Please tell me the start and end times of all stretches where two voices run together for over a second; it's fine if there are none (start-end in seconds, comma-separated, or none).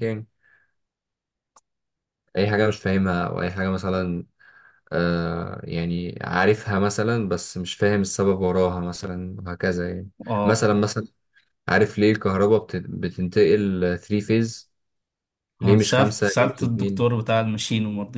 15.6-17.1